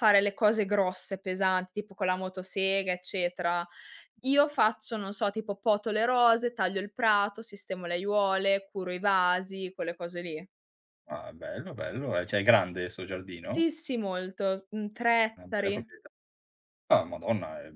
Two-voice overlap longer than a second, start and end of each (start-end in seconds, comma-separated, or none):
none